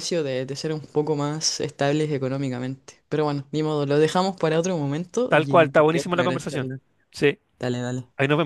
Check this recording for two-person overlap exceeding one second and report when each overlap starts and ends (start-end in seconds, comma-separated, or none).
5.3-6.7